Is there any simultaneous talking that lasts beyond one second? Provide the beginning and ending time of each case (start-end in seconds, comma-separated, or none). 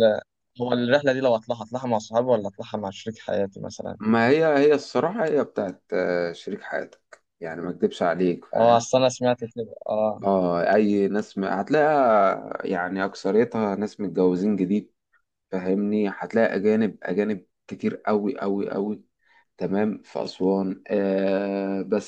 none